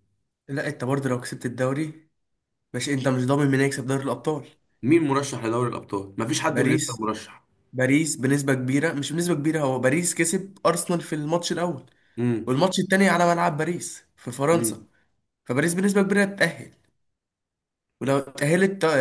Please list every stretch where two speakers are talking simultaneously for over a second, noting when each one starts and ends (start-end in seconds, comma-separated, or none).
none